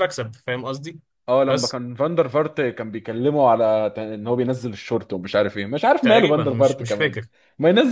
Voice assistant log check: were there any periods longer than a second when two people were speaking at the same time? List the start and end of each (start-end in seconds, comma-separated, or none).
6.0-7.2